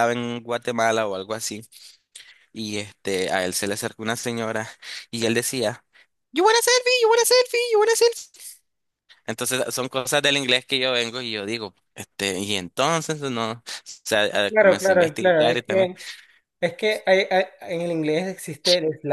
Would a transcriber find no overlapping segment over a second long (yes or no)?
no